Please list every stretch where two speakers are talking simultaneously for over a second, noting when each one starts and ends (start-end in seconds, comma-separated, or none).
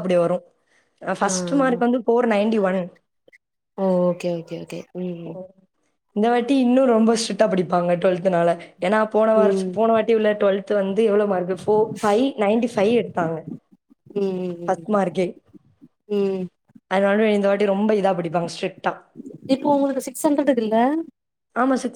none